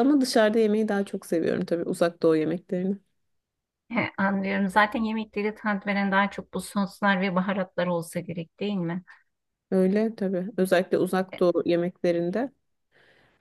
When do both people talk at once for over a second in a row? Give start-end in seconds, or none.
none